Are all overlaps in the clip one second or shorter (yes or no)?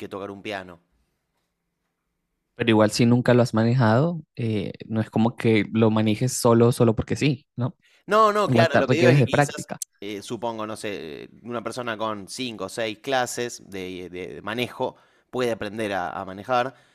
no